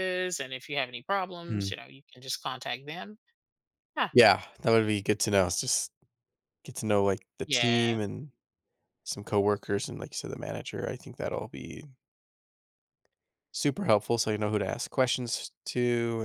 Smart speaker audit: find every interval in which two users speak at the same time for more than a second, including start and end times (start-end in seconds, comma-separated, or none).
none